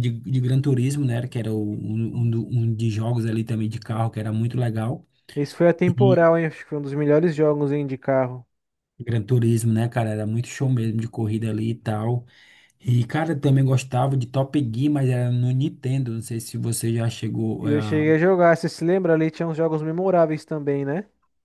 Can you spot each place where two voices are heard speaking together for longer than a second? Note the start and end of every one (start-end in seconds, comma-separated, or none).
none